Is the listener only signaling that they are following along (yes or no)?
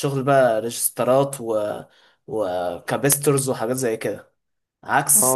no